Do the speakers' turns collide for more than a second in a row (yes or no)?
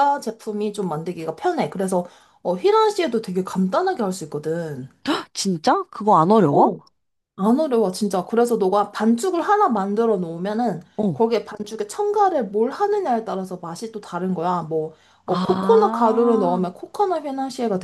yes